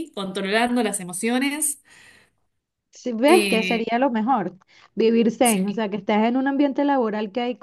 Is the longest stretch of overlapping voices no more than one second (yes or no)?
yes